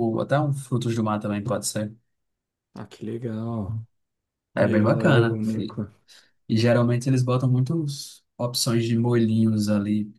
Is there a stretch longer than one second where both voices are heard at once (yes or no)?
yes